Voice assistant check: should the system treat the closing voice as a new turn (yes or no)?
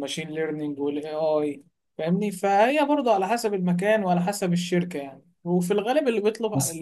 no